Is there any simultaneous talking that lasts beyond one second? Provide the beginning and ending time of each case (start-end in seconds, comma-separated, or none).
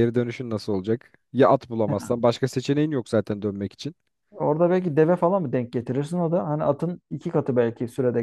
none